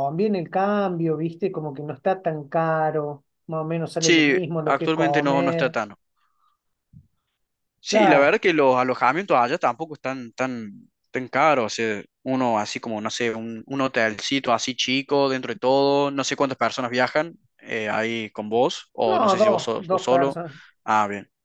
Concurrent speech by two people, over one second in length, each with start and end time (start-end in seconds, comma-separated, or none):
4.0-5.8, 19.0-20.4